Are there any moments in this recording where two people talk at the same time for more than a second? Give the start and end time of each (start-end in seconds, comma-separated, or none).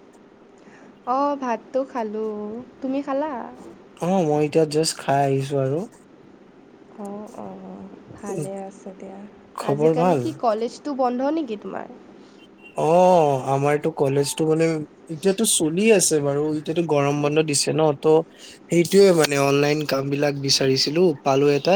none